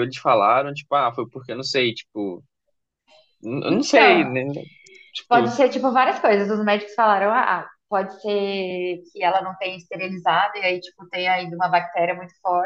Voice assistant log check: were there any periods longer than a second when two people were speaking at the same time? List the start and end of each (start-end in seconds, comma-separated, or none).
none